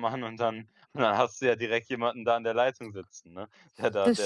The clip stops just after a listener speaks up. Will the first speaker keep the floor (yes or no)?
no